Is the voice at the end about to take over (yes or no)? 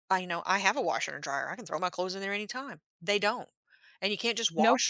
no